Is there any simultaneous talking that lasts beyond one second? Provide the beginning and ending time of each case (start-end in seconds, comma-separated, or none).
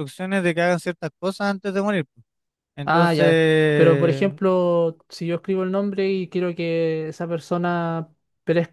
none